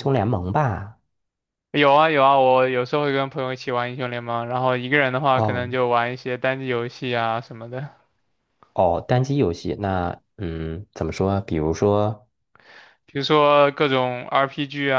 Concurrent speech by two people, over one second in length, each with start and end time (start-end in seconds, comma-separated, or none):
none